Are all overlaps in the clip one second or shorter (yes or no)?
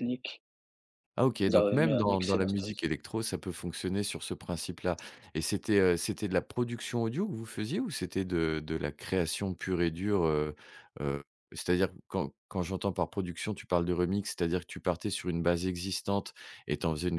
no